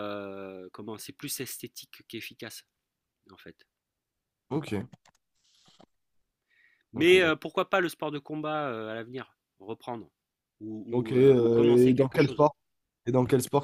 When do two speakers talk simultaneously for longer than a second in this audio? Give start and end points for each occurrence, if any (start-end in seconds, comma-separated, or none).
10.9-12.5